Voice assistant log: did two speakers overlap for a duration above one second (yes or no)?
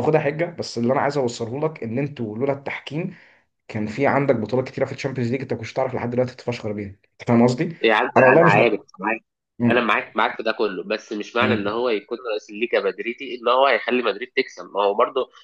no